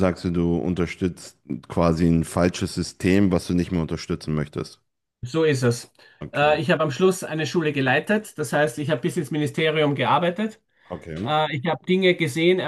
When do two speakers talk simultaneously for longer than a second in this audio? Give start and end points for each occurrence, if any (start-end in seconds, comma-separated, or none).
none